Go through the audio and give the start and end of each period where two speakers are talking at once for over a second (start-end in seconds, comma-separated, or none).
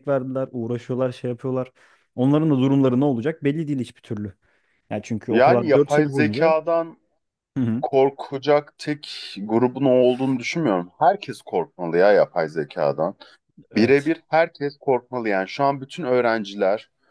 5.3-6.5